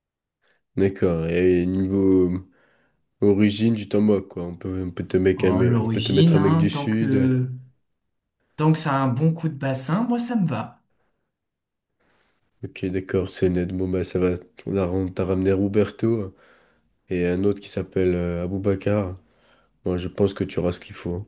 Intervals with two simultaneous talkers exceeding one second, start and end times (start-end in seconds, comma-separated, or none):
5.4-7.4